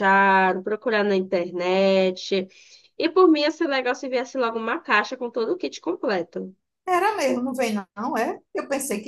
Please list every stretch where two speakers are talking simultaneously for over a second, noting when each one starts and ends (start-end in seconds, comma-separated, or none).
none